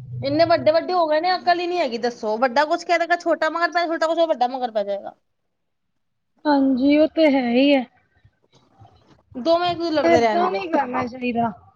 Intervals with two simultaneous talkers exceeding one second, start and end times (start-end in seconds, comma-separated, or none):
none